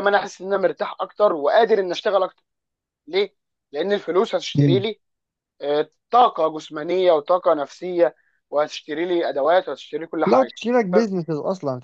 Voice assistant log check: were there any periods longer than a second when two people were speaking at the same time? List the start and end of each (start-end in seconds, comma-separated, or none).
none